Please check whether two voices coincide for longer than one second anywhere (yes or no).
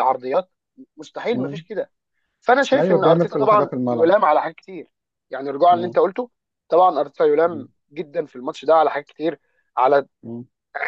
yes